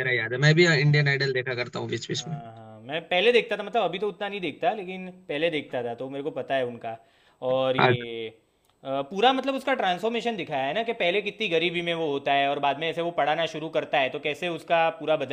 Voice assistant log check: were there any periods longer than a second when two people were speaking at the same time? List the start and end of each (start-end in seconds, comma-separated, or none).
none